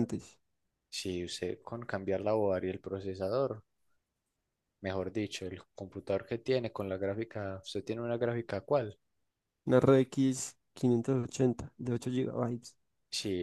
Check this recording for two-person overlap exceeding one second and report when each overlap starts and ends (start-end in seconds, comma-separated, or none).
none